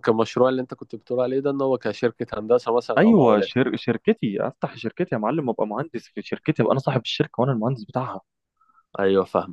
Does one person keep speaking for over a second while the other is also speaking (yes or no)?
no